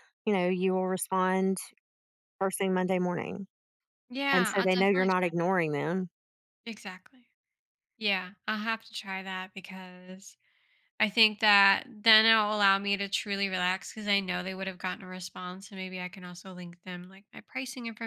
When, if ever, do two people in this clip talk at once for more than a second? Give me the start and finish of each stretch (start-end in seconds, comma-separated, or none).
4.3-5.5